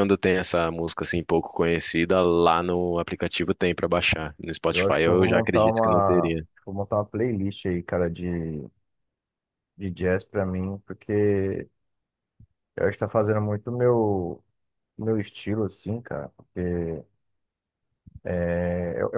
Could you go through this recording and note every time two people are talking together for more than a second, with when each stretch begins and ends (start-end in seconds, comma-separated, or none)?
4.7-6.5